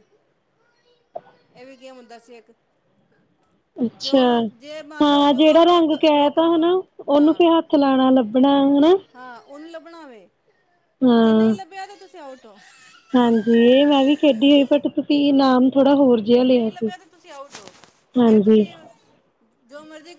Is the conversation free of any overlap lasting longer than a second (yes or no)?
no